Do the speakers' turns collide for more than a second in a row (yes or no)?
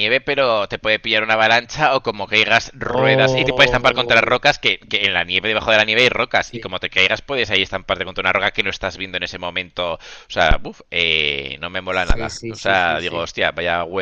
yes